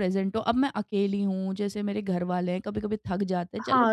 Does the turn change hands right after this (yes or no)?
yes